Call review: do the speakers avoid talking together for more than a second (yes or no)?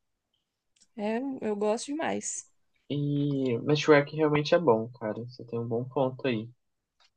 yes